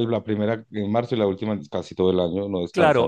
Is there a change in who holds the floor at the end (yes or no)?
yes